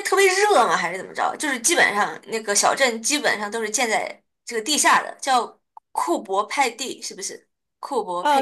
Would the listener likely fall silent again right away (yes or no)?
no